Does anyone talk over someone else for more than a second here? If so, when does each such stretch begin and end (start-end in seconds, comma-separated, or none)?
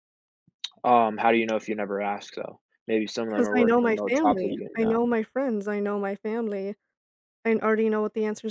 3.4-5.0